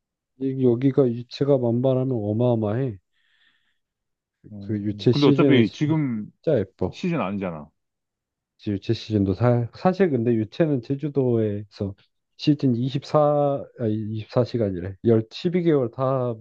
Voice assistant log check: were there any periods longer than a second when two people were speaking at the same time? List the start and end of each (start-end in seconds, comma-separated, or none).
4.6-5.8